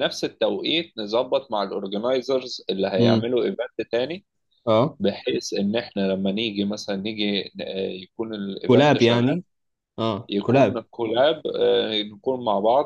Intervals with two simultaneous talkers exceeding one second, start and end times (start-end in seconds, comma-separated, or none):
none